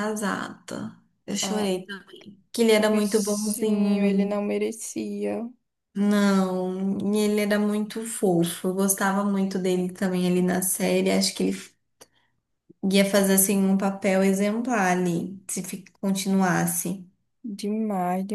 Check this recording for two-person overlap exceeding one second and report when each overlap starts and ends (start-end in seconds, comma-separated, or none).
2.8-4.4